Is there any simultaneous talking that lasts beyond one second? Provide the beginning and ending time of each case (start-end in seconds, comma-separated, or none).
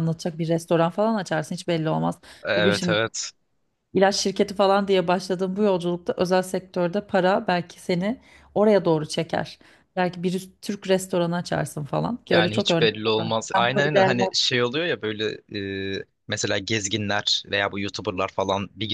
12.3-14.1